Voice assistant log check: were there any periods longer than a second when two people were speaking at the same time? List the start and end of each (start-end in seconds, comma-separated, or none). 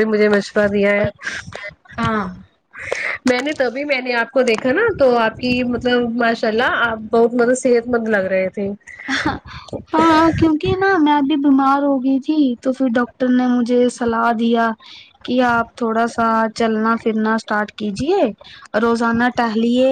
none